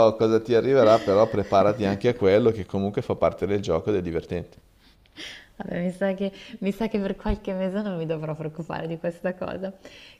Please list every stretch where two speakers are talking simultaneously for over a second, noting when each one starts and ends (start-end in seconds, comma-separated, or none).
none